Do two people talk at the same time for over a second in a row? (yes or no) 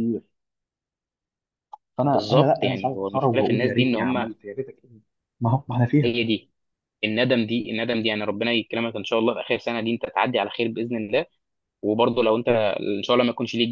yes